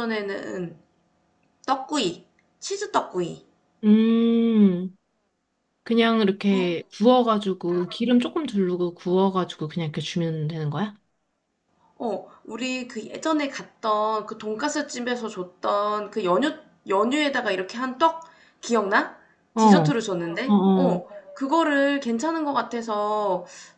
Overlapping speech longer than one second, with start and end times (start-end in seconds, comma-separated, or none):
19.6-21.1